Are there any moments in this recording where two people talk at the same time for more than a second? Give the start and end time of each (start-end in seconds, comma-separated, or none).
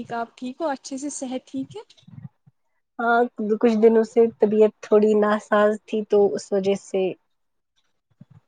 none